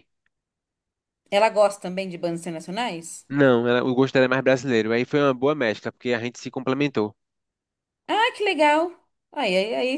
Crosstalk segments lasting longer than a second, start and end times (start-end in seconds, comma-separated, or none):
none